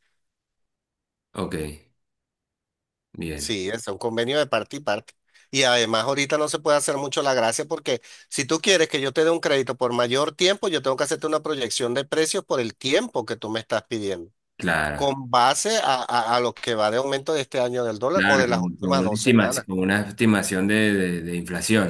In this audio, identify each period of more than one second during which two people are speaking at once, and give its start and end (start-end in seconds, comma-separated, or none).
18.1-19.7